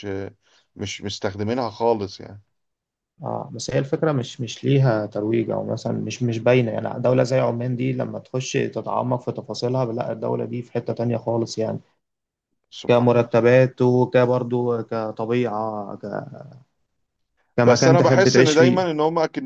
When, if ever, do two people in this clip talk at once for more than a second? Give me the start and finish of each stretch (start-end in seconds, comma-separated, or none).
17.6-18.8